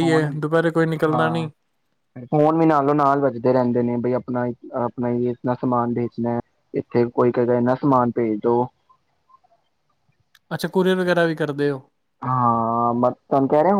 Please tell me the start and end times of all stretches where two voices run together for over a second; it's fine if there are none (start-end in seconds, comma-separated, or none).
none